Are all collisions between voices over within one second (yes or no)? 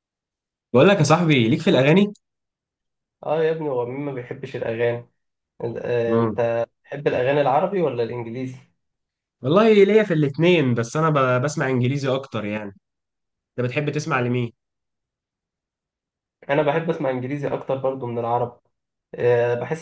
yes